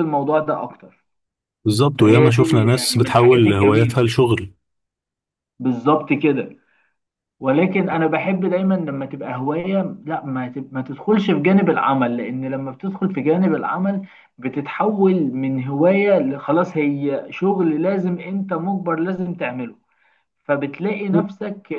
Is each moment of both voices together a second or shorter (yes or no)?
no